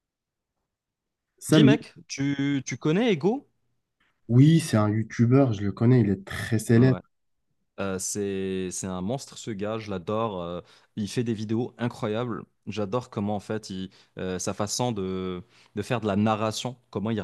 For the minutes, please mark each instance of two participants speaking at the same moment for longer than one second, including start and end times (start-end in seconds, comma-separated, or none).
none